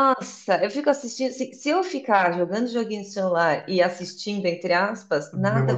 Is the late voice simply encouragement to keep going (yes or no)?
yes